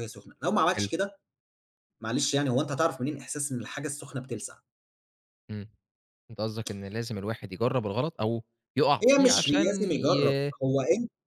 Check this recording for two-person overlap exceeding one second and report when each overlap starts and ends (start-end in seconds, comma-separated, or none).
9.1-10.5